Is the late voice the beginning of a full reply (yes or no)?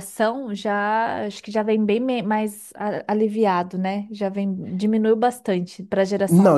yes